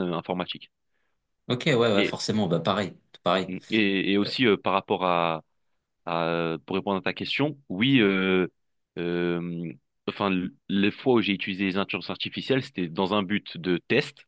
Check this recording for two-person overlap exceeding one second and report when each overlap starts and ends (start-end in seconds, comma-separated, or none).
none